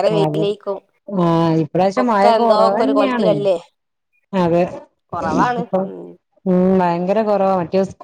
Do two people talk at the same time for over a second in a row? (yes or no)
yes